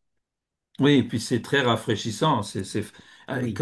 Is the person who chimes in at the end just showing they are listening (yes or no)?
yes